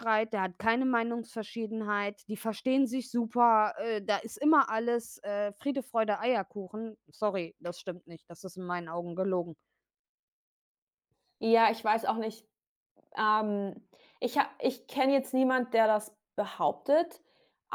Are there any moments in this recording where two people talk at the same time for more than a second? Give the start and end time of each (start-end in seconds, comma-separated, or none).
none